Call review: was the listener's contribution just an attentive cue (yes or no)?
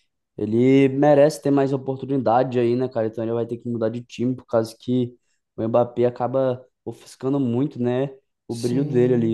no